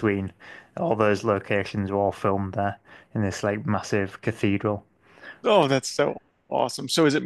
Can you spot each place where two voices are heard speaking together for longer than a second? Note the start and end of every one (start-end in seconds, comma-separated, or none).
none